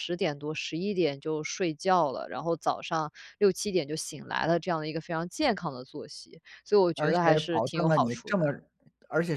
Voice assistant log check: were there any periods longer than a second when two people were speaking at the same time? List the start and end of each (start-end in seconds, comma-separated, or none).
7.0-8.4